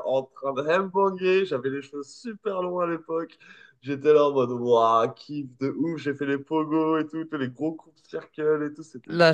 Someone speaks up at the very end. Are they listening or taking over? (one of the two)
taking over